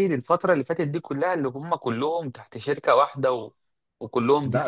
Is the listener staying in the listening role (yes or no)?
no